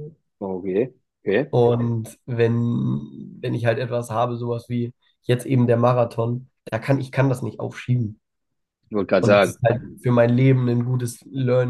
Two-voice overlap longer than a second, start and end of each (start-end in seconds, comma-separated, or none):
none